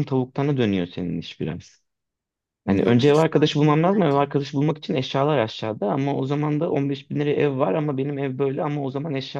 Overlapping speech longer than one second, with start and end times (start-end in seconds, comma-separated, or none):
2.7-4.2